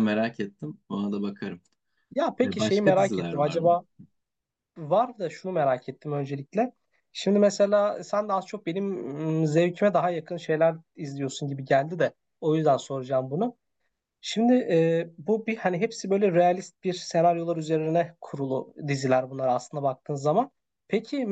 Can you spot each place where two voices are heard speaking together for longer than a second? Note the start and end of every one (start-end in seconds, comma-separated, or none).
2.4-3.8